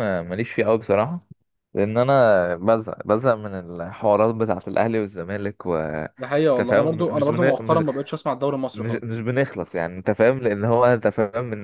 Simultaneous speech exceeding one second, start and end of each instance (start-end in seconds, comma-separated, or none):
6.6-7.8